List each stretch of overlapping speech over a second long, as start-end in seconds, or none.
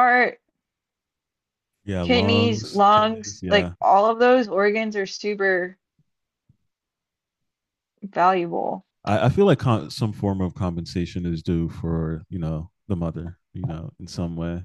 2.0-3.7